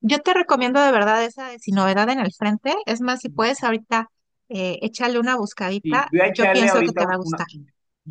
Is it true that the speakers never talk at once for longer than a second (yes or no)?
no